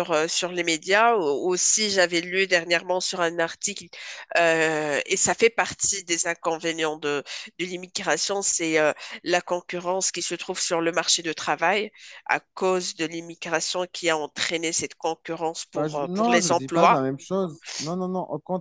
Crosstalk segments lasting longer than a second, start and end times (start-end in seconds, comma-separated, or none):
15.8-17.0